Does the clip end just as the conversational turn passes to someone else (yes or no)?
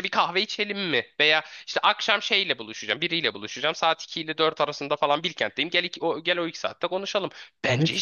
yes